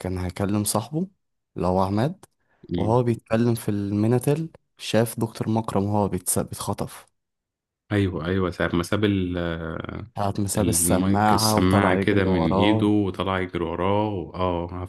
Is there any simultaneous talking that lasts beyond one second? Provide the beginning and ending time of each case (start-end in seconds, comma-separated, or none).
10.6-12.9